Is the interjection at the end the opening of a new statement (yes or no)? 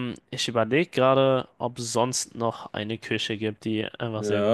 yes